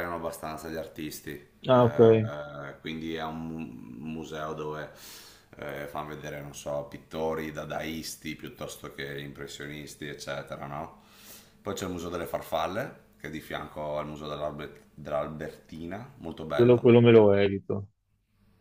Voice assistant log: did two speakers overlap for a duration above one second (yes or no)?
no